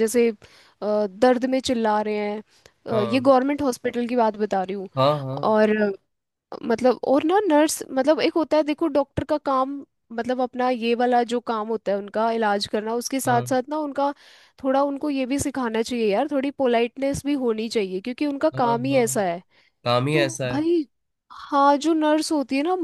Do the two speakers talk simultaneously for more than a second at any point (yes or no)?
no